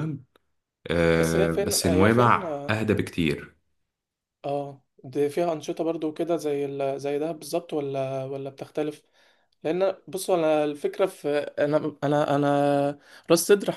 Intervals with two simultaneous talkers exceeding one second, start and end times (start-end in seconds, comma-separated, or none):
1.1-2.8